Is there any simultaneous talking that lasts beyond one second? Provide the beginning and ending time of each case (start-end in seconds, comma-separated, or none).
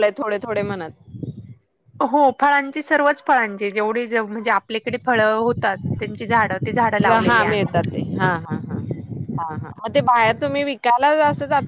none